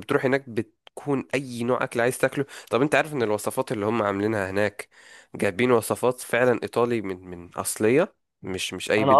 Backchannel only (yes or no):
no